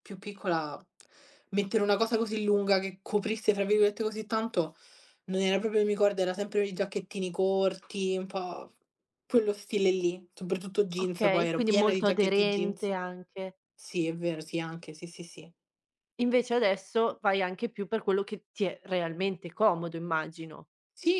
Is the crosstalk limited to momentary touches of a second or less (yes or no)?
no